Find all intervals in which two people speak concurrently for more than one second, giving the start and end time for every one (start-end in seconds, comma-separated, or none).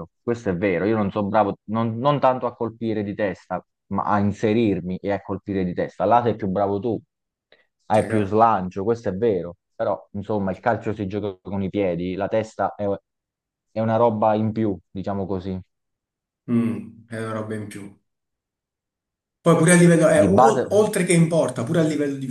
none